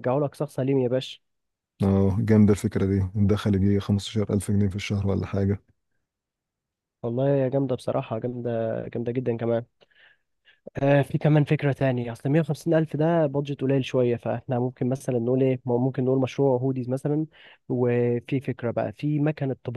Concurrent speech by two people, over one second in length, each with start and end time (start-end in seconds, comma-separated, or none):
none